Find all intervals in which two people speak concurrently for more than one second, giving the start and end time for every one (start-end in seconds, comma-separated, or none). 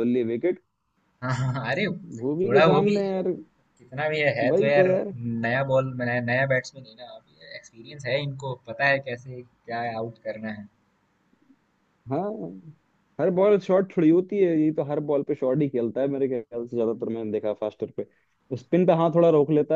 none